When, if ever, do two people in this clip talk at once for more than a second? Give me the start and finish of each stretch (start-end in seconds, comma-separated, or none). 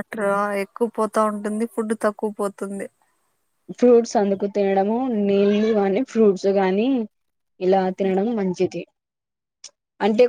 none